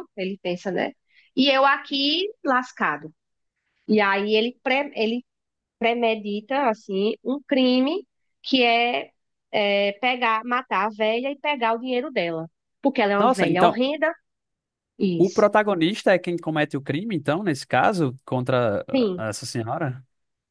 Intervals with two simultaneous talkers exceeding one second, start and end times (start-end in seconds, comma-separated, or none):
none